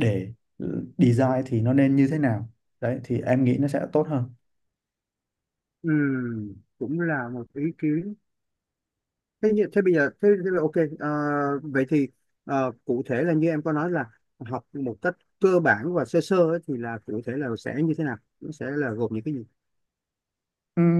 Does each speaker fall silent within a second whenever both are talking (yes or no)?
yes